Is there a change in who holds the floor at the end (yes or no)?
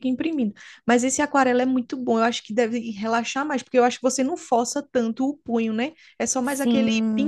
yes